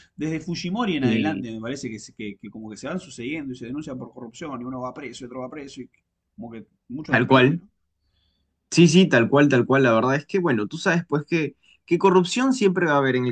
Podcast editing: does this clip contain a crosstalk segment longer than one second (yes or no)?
no